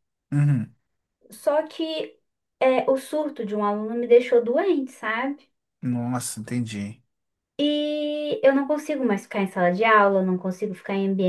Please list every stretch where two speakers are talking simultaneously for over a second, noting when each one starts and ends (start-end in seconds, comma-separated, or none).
none